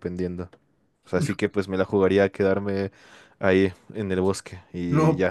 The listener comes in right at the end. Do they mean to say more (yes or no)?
yes